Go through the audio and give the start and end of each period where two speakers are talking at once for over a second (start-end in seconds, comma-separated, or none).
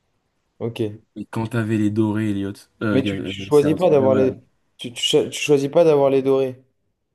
2.9-4.4